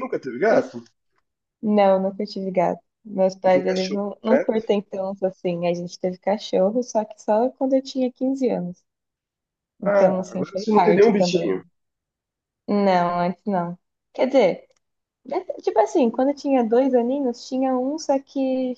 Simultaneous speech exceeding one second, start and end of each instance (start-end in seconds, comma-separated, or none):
3.4-4.7, 9.8-11.6